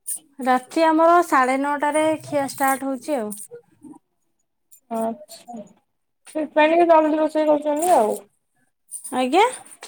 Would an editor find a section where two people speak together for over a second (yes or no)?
no